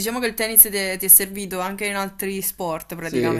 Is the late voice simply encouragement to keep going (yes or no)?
no